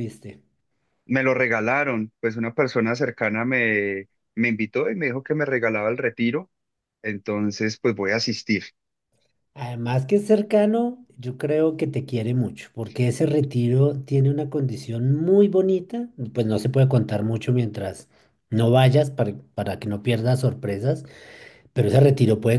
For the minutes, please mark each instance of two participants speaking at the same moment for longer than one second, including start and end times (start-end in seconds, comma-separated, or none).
none